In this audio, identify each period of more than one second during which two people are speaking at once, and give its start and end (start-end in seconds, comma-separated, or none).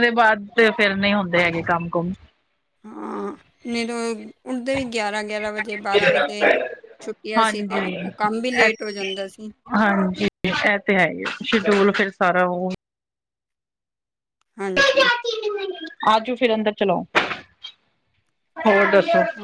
none